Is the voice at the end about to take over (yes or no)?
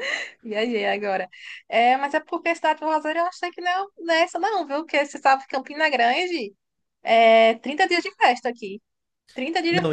no